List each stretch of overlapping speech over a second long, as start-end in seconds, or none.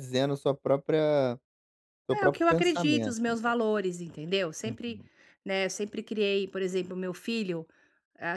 2.1-3.5